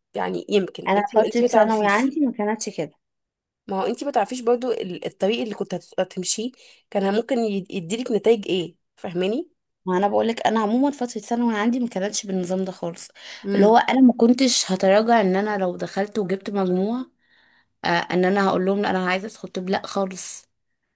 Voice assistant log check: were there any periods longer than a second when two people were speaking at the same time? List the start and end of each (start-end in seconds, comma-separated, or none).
0.9-2.1